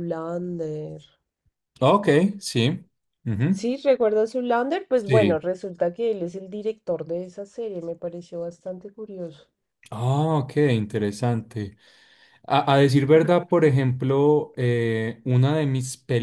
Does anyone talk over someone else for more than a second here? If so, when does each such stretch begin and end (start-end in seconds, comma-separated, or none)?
none